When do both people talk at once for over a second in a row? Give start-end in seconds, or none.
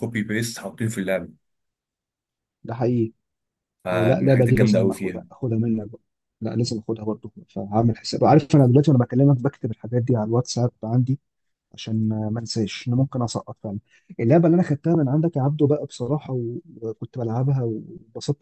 3.9-5.2